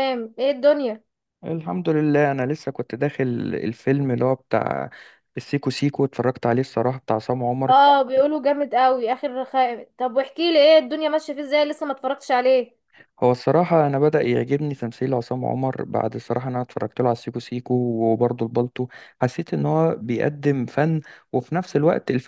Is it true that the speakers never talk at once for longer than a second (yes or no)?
yes